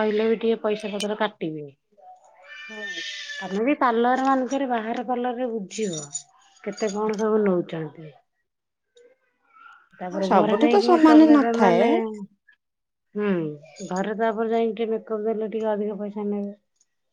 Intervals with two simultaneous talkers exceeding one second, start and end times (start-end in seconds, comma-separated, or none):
10.1-11.8